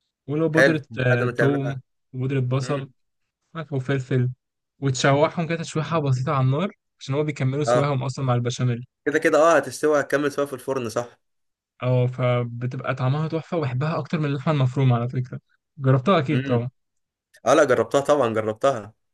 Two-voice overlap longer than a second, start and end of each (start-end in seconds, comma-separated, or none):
0.5-1.8